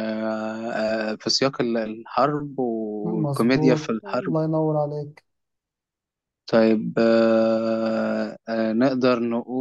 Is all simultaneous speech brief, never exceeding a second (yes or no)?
no